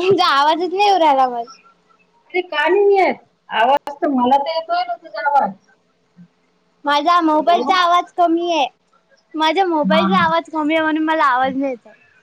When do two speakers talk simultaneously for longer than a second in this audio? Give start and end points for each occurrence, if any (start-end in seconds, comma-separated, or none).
none